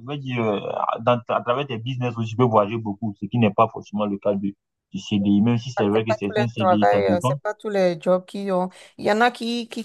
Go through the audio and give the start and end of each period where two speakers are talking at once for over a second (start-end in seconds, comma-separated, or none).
5.9-7.3